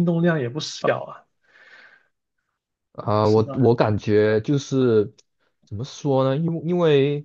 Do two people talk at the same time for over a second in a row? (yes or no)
no